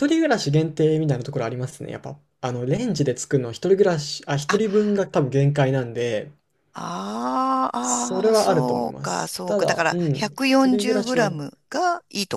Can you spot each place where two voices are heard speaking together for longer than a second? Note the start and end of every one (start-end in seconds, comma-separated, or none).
7.8-11.4